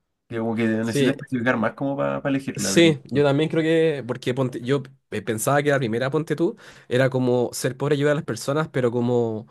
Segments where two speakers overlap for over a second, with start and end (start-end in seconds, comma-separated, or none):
none